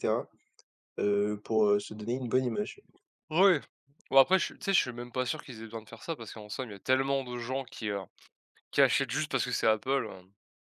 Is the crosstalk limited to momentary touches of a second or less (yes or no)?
yes